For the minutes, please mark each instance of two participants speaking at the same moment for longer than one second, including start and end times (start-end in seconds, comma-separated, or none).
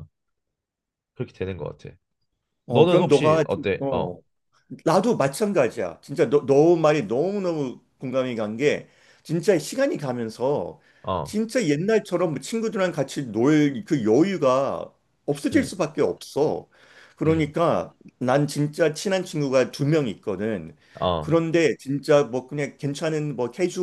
2.7-4.2